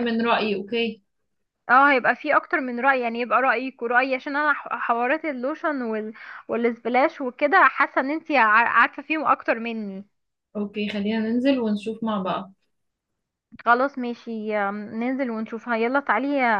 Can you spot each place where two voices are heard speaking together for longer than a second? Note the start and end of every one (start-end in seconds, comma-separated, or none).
none